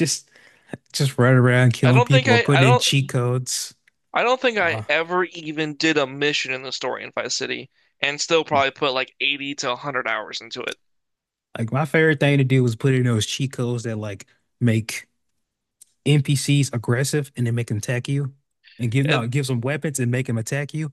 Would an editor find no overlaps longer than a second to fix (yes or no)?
no